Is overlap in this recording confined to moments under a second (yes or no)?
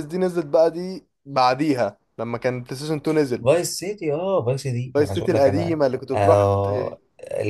no